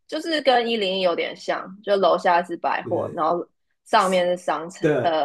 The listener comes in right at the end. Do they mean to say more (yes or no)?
yes